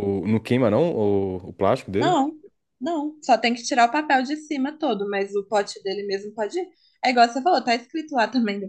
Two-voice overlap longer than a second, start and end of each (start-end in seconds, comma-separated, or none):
none